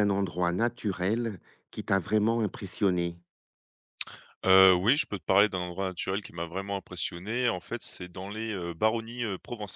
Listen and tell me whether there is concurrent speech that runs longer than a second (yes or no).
no